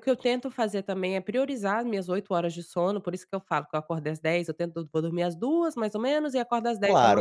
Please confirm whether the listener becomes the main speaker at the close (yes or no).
yes